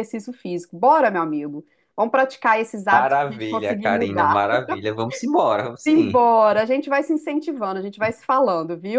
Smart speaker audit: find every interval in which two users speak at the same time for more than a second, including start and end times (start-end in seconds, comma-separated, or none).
2.9-4.5